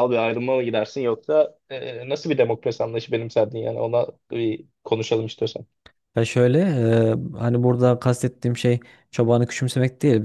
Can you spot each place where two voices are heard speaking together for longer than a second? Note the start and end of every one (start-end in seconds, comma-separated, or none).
none